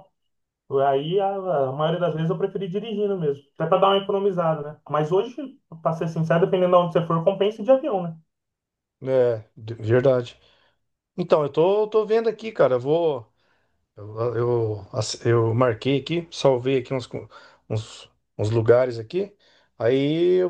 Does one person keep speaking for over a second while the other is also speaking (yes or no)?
no